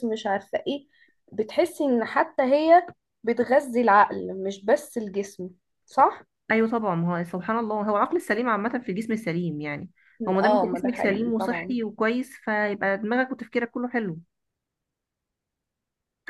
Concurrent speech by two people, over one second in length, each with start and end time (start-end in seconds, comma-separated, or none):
10.4-11.7